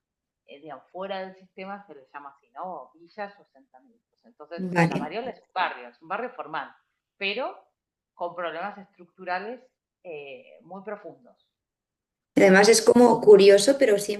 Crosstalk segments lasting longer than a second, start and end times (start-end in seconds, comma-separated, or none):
none